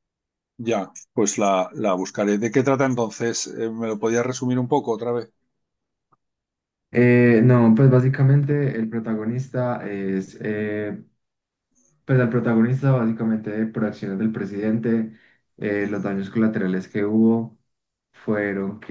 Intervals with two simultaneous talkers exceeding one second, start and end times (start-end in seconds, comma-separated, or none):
none